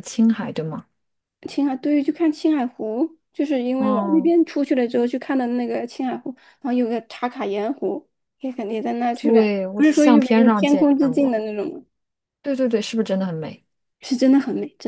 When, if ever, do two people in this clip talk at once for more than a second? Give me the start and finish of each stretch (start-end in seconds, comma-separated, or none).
9.1-11.3